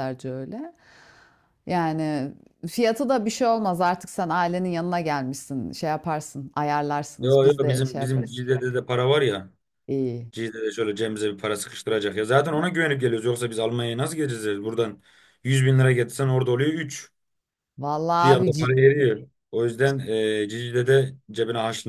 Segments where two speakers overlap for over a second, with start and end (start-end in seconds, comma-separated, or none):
7.2-8.4